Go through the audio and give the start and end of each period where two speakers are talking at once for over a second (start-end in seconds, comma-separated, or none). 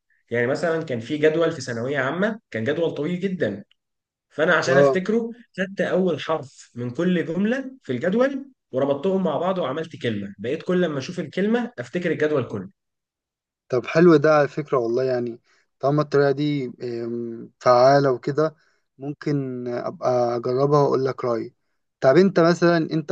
none